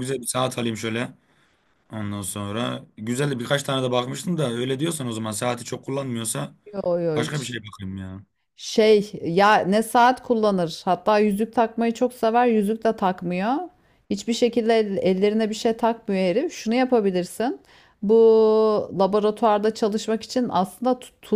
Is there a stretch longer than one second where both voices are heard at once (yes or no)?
no